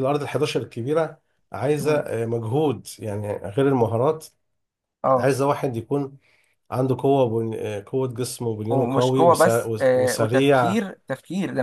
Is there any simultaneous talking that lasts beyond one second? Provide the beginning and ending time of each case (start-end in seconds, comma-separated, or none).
8.7-10.8